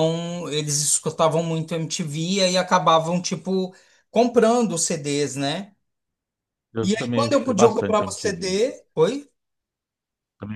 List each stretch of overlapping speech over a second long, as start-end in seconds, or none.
6.8-8.6